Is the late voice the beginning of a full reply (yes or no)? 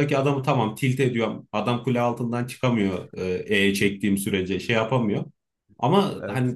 no